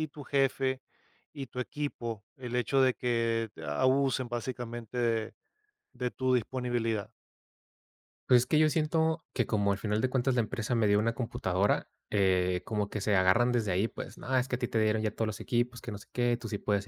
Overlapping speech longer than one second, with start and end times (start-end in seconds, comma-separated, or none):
none